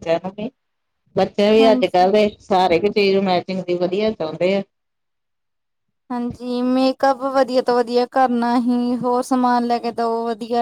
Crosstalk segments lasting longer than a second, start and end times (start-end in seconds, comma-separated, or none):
none